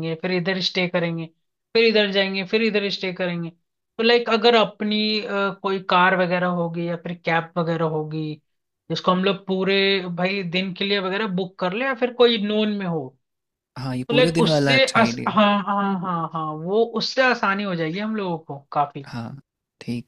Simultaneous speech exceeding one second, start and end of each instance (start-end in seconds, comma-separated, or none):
14.1-15.4